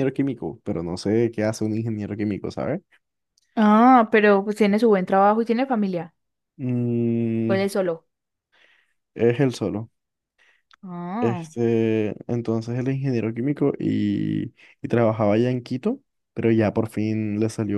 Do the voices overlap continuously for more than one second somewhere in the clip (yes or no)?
no